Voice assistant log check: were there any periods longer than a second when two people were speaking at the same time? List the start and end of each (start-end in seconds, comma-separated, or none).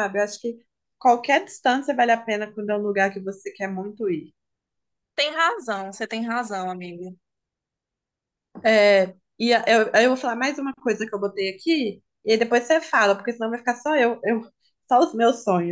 none